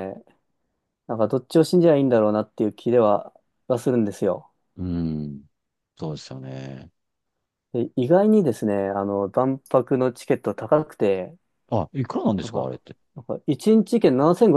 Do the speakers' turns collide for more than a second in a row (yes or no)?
no